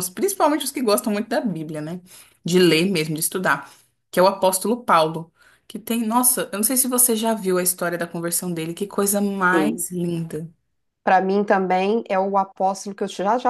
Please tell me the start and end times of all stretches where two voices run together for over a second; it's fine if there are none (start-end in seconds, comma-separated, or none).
none